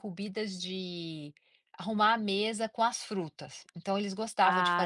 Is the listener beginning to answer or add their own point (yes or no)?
no